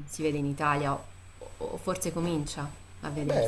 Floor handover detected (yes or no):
yes